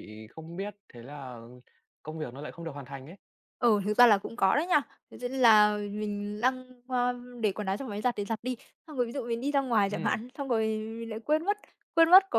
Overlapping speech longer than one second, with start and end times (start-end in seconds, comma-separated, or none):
none